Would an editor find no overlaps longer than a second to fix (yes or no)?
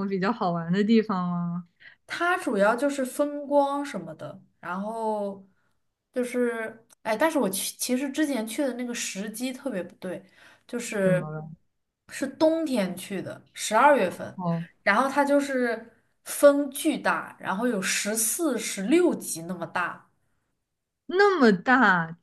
yes